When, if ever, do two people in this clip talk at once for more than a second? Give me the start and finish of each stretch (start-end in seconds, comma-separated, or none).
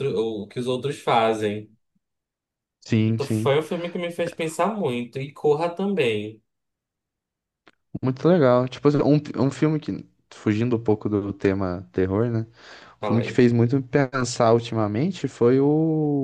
none